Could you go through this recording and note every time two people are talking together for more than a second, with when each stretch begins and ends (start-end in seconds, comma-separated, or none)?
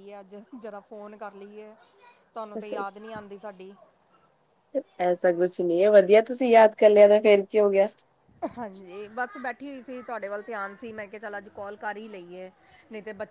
none